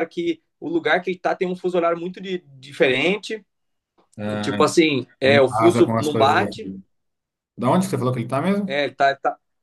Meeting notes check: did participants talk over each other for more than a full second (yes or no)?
yes